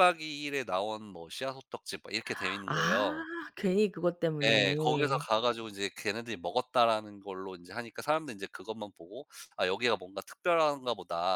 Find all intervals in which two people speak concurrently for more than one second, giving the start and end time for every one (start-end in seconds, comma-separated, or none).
none